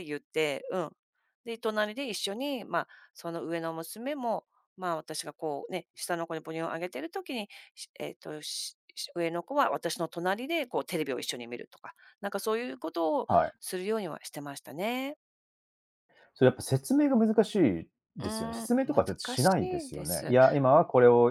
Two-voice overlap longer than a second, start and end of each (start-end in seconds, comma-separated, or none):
18.2-20.3